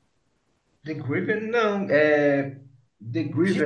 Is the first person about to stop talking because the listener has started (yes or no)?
no